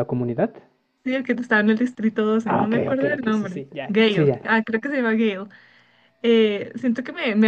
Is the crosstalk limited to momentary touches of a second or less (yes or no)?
no